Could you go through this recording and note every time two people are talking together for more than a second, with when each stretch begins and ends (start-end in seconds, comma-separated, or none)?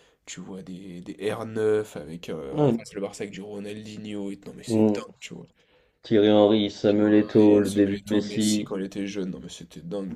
6.9-8.7